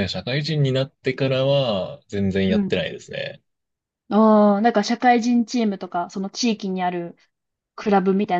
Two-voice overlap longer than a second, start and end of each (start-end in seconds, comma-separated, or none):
none